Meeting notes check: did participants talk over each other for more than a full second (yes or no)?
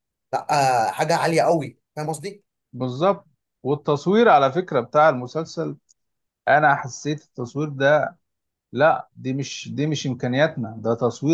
no